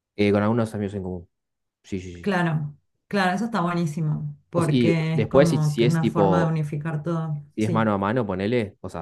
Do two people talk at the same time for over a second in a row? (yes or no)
yes